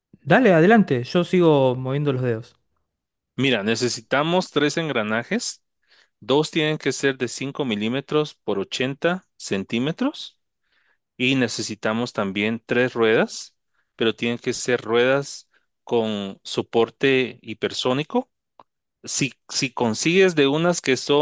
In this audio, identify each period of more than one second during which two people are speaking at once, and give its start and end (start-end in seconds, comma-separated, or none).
none